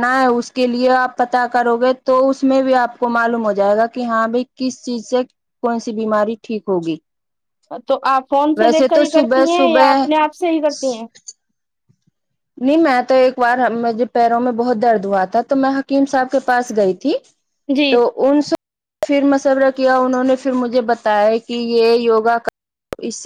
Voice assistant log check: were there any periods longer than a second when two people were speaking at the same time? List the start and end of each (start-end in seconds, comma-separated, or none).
8.6-10.1